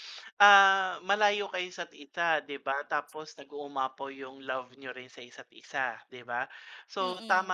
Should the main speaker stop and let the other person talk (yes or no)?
no